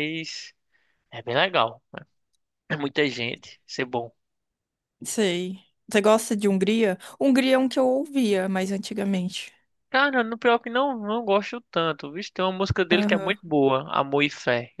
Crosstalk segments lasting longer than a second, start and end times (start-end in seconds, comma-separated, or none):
none